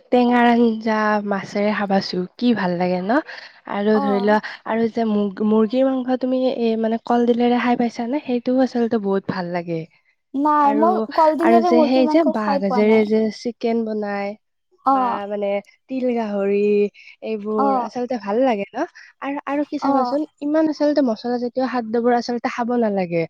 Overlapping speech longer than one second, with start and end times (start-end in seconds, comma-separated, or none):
10.7-13.0